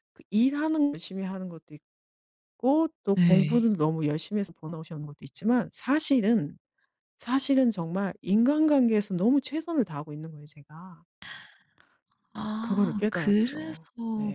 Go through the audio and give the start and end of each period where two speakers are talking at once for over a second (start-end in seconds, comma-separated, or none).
12.6-13.8